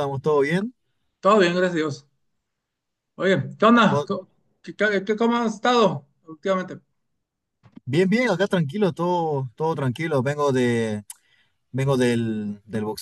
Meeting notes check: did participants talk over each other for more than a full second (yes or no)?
no